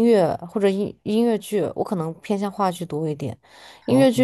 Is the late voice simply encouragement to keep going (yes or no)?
yes